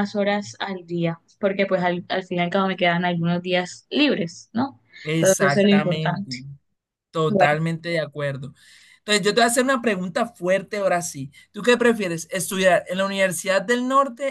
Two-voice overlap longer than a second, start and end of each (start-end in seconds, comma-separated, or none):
5.0-6.4